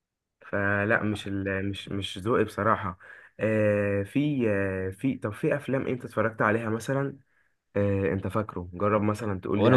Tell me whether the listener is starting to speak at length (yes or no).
yes